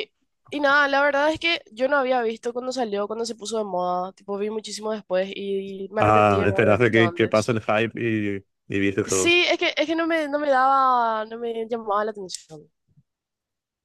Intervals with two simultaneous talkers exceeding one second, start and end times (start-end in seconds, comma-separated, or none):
6.0-7.5